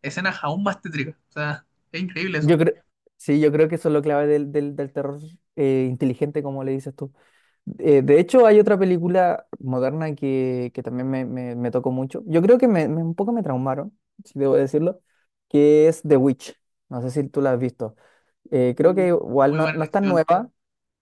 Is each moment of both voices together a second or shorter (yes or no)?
no